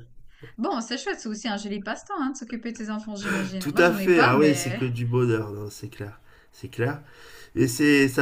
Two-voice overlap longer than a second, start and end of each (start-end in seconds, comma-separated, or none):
3.6-4.8